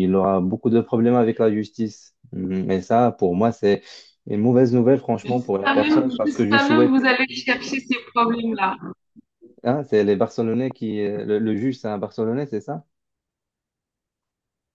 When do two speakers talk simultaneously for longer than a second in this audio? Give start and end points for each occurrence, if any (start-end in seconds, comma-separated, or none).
5.2-6.9